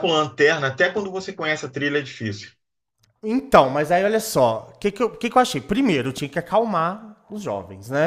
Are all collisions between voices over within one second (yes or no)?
yes